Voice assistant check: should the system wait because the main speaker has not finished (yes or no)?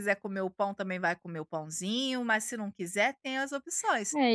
no